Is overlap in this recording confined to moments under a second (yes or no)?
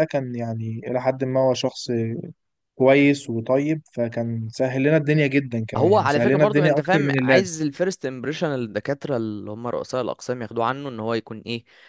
no